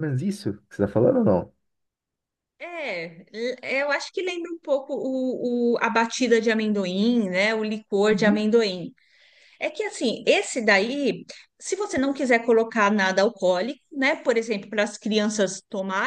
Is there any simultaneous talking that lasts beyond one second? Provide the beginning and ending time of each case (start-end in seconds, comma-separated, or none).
none